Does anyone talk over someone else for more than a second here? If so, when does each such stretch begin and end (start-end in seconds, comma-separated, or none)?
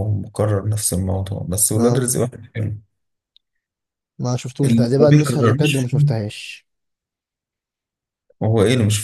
4.6-6.2